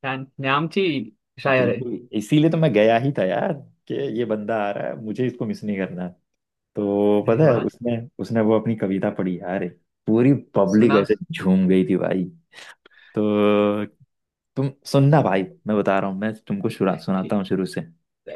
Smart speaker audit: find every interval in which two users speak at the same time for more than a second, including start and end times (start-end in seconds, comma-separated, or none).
none